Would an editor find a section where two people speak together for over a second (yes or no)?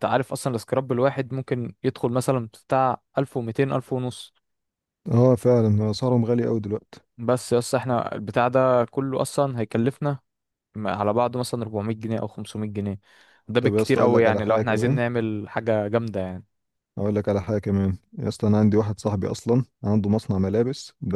yes